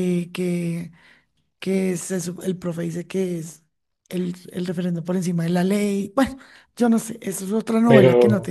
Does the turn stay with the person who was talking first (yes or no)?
no